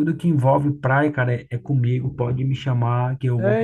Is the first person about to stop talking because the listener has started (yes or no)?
yes